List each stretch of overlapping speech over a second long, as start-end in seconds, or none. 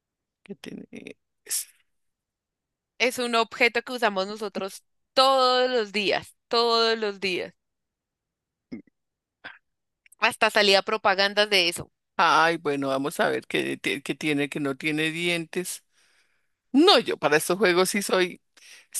none